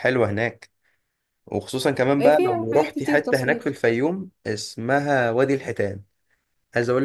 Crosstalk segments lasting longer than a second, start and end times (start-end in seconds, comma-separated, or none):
2.2-3.8